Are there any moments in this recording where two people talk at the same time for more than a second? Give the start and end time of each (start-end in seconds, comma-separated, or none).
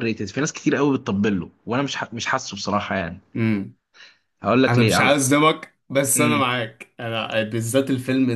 none